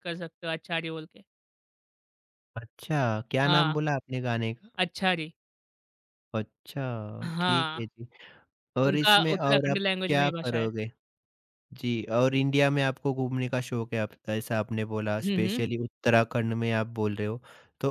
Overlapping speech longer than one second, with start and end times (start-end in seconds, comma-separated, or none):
8.8-10.7